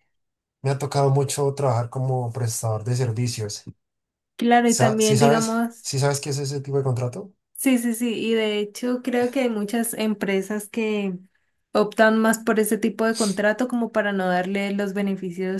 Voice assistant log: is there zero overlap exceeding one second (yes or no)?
no